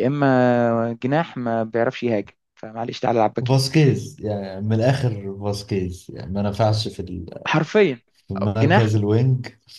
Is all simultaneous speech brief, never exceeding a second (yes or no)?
yes